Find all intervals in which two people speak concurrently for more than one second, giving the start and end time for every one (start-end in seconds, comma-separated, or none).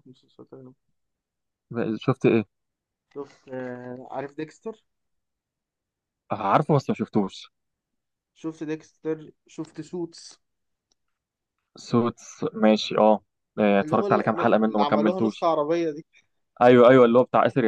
13.8-15.5